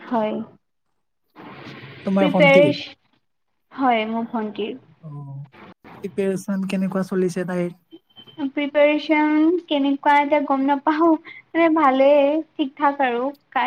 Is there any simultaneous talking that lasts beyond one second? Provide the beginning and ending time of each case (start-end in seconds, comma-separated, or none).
none